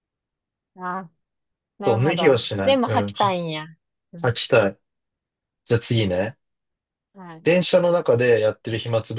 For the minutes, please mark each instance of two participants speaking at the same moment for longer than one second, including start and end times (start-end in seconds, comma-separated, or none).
1.8-3.4